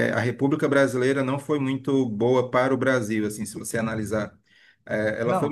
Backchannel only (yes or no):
yes